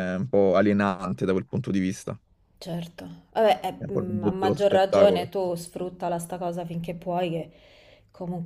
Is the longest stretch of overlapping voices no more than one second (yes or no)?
no